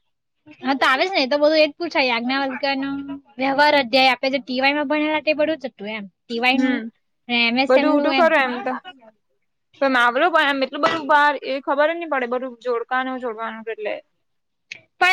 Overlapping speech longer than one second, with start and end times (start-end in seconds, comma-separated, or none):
none